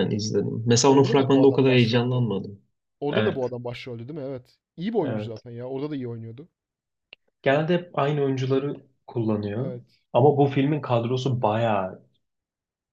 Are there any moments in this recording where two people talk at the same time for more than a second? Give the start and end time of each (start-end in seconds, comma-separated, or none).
0.9-2.2